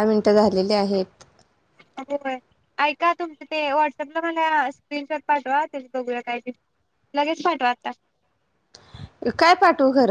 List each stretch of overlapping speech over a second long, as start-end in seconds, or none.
none